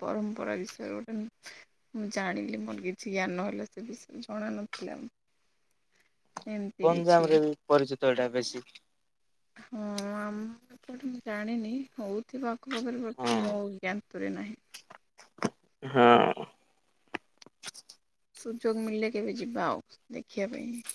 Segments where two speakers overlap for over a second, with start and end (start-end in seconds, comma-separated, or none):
none